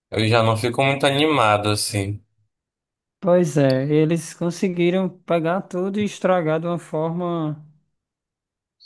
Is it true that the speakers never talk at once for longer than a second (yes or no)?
yes